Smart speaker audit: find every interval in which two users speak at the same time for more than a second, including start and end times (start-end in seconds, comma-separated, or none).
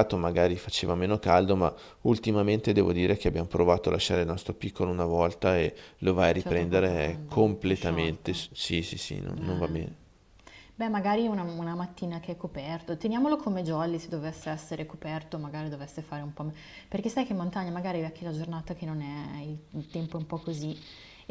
6.4-8.4